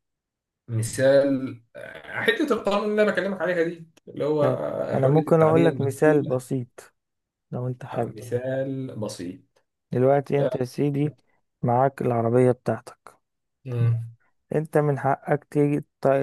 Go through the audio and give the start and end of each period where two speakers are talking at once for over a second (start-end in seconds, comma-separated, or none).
4.4-6.4